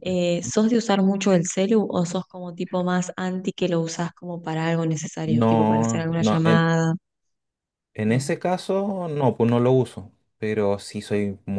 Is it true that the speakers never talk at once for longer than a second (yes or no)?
no